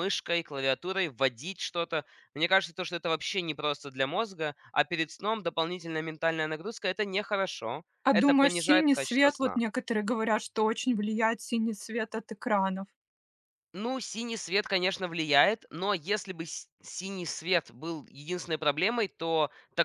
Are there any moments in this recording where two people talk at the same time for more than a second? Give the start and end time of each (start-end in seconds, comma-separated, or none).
8.0-9.6